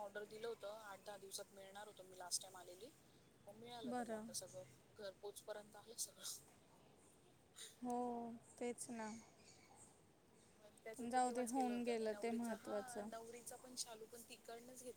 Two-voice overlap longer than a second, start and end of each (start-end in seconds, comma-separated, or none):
11.0-13.1